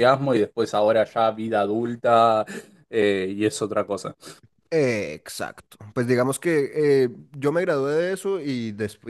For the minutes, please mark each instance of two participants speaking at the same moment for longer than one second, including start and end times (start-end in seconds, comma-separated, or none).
none